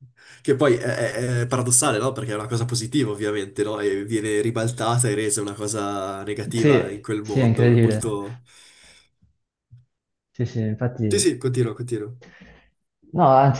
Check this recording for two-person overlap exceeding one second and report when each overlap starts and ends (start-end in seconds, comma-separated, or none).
6.5-8.2